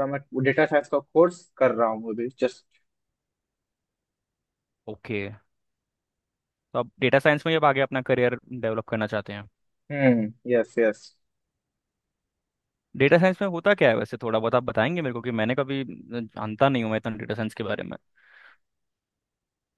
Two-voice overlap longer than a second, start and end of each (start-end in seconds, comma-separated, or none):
none